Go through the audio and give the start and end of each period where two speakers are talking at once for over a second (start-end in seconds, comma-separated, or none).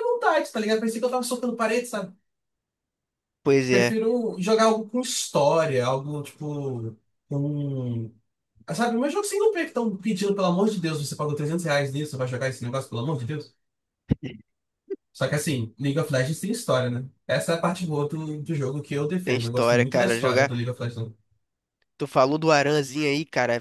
19.2-20.5